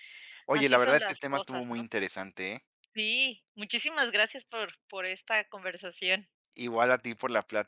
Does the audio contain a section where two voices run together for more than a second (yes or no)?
yes